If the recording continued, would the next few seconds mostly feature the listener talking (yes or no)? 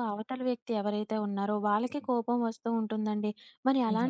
no